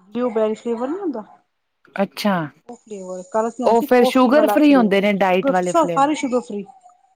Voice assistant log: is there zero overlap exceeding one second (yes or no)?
no